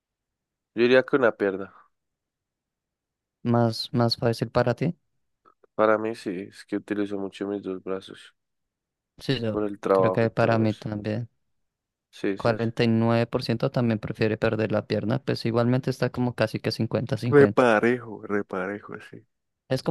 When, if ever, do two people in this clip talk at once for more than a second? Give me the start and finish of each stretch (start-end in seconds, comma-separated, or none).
9.5-10.9